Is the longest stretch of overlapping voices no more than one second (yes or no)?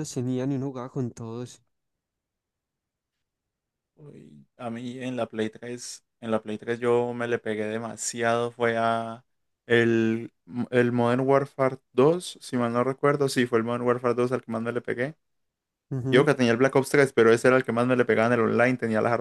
yes